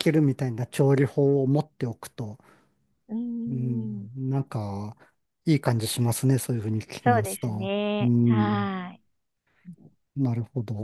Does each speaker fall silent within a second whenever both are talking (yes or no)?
no